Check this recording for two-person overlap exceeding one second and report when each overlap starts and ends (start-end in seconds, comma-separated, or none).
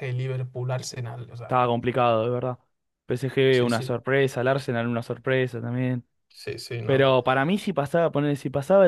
none